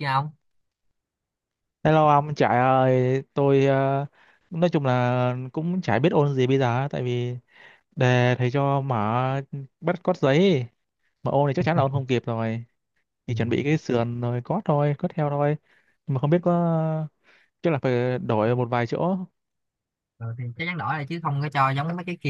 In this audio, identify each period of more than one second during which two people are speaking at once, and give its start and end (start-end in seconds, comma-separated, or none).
none